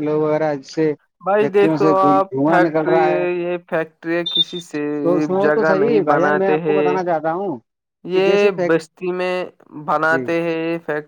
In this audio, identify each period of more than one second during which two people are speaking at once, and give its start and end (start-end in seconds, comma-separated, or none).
1.4-3.0, 5.4-7.0